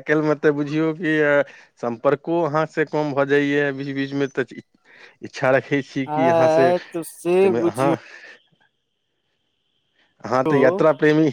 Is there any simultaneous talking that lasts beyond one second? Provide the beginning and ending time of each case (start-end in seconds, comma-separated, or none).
6.2-7.9